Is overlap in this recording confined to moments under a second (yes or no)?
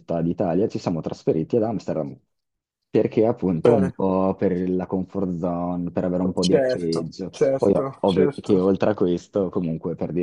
no